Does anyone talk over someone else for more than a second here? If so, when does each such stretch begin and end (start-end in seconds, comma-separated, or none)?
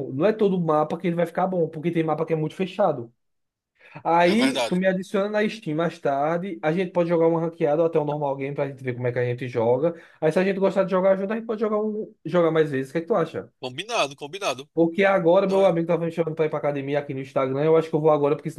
none